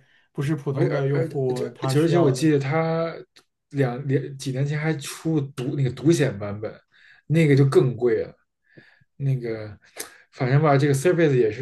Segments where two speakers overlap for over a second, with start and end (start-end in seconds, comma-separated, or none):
0.7-2.5